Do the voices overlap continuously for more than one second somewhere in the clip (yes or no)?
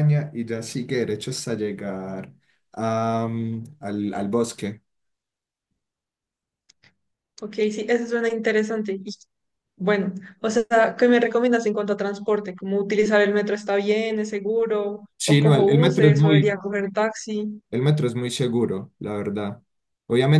yes